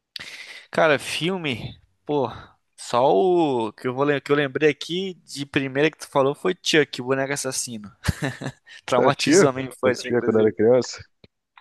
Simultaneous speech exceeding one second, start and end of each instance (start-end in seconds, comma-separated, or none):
9.0-10.5